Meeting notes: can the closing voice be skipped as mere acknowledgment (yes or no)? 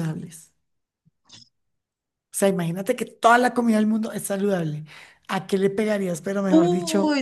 no